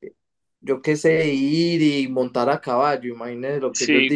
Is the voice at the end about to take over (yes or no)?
yes